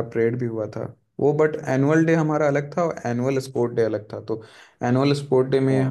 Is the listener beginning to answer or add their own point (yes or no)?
no